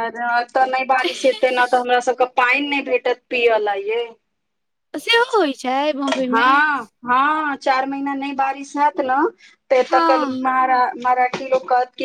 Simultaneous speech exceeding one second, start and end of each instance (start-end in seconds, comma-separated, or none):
none